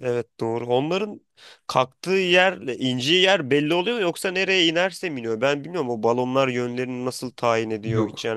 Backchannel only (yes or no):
yes